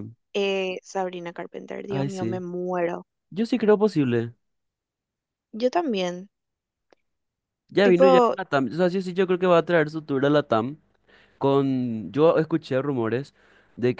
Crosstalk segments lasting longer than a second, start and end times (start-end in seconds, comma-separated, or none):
none